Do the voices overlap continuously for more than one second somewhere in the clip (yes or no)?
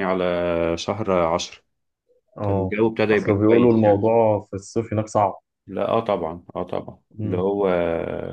yes